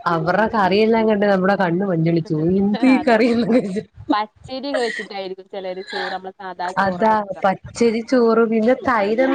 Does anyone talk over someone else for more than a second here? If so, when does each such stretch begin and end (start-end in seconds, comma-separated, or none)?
none